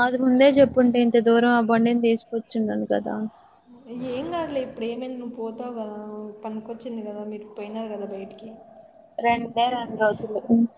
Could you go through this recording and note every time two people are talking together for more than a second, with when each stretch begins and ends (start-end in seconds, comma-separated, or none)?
none